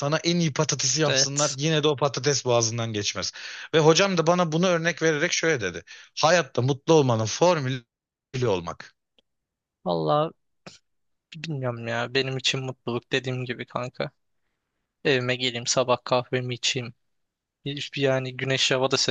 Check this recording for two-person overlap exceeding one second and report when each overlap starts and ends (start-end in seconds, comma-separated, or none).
none